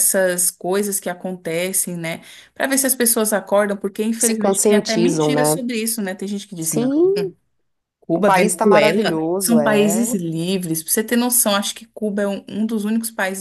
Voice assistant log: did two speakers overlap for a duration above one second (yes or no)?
yes